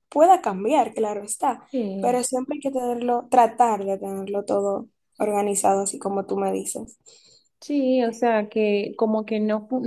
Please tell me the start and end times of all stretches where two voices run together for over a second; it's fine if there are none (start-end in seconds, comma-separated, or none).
none